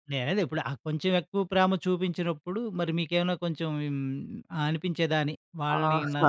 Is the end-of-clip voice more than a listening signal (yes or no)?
yes